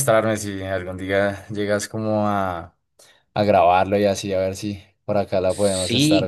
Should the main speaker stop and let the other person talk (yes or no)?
yes